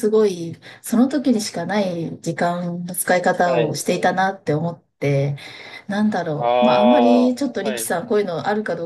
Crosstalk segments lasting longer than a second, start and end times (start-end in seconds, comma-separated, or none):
6.3-7.9